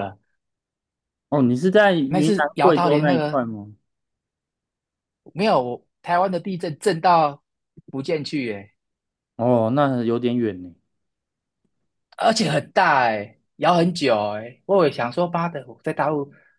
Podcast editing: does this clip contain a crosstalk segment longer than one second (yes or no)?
yes